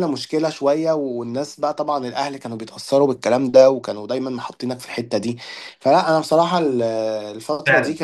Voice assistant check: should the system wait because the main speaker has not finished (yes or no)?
no